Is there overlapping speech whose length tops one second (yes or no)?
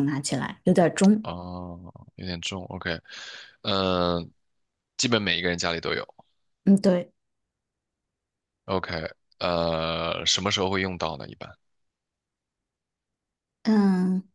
no